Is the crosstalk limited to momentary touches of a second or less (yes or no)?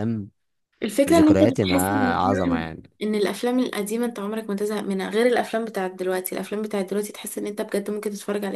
no